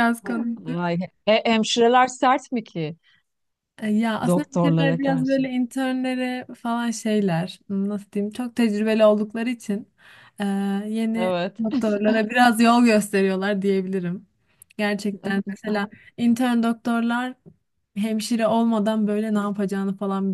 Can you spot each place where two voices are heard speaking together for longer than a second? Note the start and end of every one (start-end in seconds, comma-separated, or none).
4.2-5.5